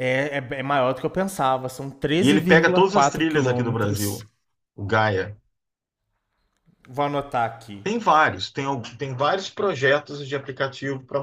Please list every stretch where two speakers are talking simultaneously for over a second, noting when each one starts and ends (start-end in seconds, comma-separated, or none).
2.2-4.2